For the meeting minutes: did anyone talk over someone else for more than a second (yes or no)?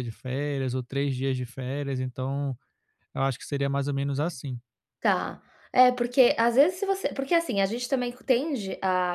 no